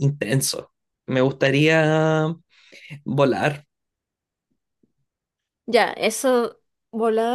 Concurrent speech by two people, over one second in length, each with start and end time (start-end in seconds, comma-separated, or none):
none